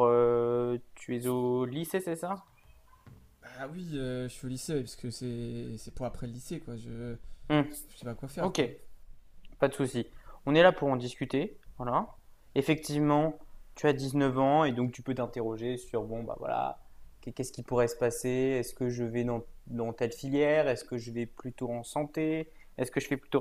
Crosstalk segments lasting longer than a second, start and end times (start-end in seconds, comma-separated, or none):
none